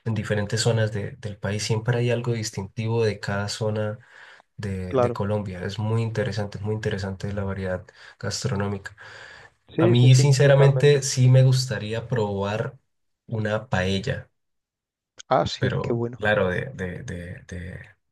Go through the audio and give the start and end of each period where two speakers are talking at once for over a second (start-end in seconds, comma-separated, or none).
9.8-11.0